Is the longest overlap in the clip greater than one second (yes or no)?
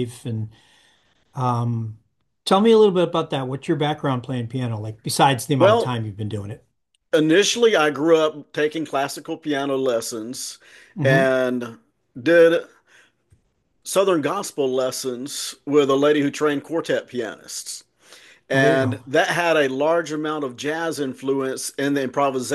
no